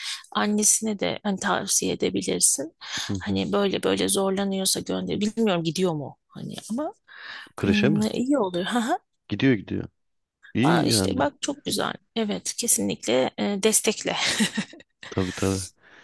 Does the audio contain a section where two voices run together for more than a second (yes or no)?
no